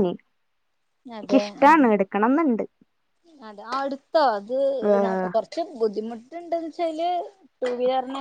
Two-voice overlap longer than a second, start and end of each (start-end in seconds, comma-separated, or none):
none